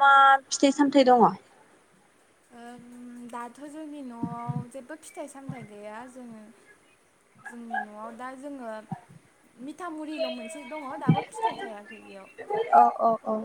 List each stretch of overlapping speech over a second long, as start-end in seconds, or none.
none